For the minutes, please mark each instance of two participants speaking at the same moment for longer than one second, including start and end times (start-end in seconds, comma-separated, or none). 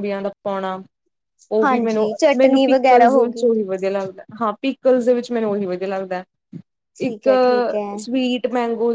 1.6-3.5